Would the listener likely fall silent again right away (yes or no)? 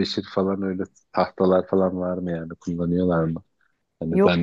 no